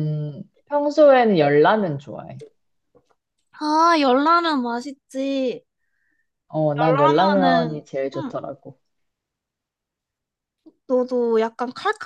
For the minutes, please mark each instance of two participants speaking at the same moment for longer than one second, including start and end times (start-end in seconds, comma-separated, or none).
6.8-8.4